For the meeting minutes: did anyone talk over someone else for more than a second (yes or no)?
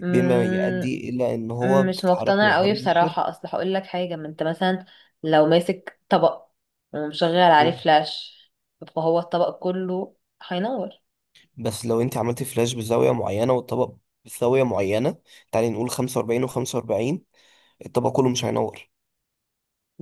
yes